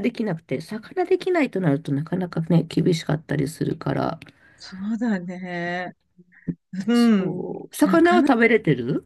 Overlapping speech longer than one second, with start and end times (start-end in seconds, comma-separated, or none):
6.9-8.3